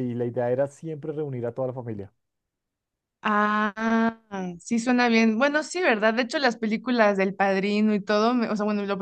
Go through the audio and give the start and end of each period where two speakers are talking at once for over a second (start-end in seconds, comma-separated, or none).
none